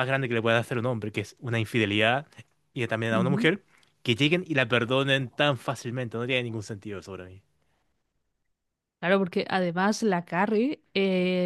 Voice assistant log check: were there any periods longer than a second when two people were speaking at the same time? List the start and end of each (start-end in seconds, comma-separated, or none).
none